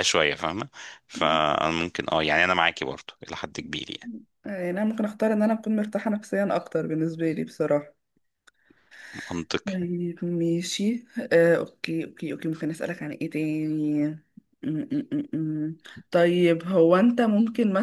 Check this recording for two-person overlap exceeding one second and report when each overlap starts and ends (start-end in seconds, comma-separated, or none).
none